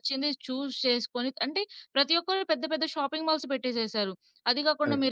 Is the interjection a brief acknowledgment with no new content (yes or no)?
yes